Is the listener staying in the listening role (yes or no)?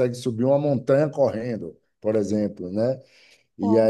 yes